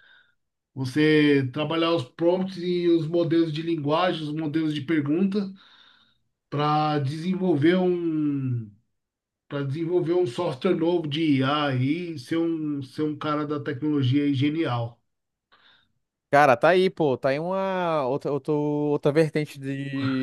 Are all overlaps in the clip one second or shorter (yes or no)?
yes